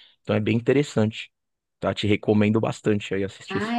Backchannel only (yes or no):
no